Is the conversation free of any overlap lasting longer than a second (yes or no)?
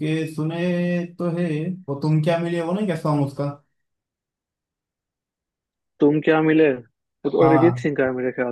yes